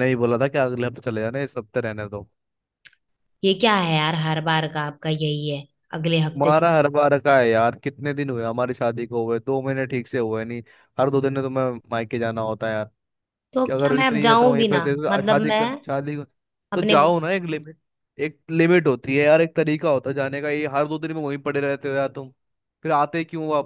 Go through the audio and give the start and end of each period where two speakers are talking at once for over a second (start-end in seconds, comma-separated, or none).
13.7-15.6